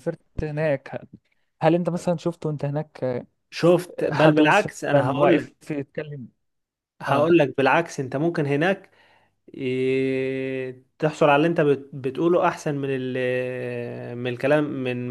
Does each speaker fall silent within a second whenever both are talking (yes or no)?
no